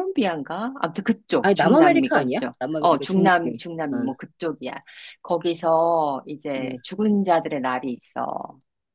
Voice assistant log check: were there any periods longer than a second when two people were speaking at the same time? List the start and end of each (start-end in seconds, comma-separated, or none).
1.4-4.1